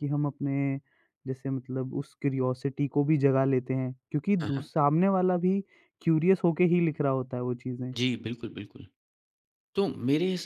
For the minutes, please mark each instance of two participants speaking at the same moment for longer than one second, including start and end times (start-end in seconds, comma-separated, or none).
none